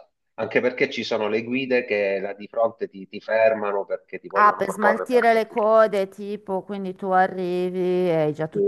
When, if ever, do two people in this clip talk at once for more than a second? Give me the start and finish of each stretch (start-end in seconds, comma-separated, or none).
4.3-5.5